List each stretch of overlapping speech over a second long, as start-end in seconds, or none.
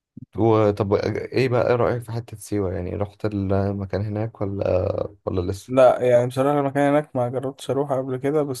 none